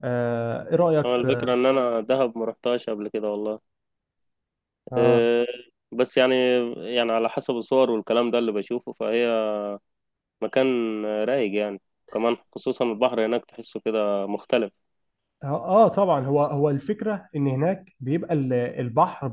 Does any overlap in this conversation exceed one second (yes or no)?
no